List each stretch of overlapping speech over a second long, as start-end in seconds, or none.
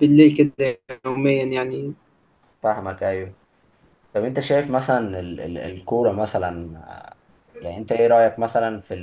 none